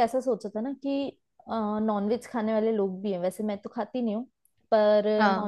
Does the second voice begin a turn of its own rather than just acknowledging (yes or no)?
no